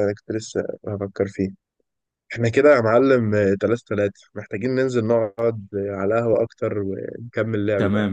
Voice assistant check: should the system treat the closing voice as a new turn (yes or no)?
yes